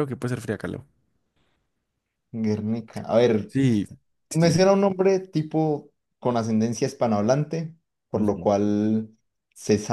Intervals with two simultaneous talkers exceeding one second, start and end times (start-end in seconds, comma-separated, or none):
none